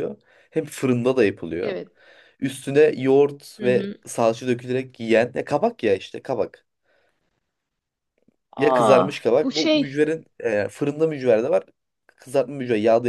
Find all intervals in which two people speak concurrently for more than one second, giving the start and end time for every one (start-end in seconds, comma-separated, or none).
8.6-10.0